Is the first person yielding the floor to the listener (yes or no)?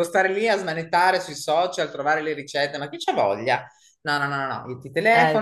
no